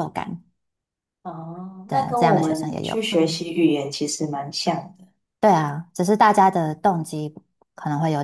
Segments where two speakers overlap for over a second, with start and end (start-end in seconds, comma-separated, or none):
1.9-3.5